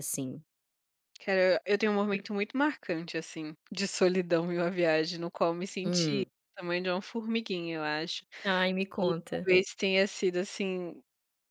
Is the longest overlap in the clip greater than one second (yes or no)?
no